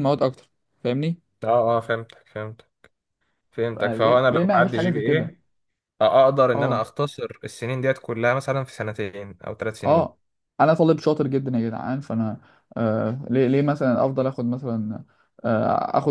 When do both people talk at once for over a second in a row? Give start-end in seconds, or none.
3.7-5.3